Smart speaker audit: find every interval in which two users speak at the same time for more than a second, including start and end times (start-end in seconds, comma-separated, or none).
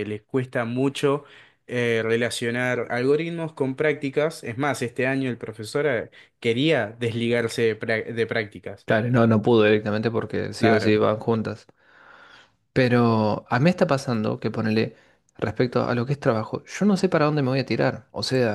none